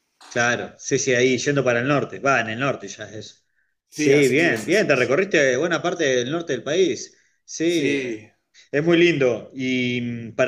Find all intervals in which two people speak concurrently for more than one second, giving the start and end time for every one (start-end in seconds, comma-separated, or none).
3.9-5.2